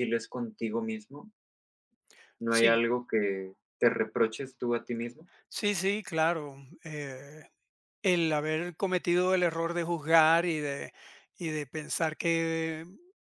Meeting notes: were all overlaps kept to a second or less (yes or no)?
yes